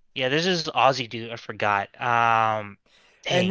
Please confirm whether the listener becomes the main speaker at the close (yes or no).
yes